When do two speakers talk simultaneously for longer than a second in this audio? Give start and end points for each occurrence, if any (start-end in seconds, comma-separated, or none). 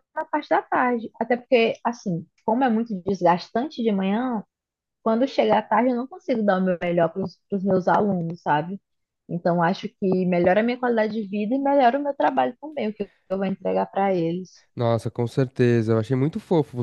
none